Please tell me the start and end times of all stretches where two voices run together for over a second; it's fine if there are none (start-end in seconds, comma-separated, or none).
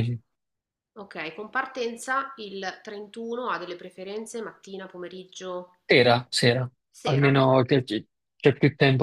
none